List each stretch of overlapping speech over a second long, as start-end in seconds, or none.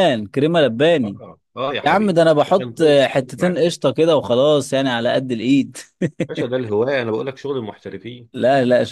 1.8-3.6